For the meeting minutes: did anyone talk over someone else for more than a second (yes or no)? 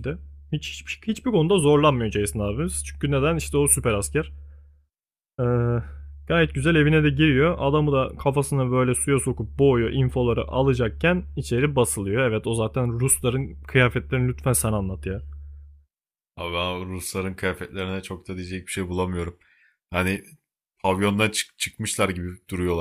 no